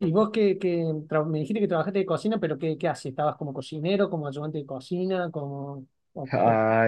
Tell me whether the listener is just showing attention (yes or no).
no